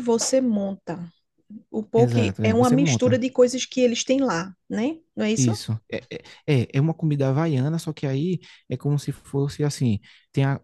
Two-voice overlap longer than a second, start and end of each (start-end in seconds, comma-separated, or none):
1.9-3.2